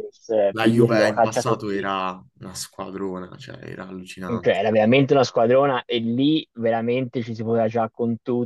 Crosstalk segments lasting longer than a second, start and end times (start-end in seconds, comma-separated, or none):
0.5-1.9